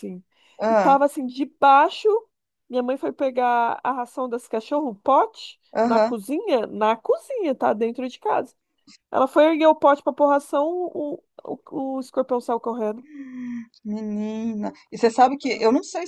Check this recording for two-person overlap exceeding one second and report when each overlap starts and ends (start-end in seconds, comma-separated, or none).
none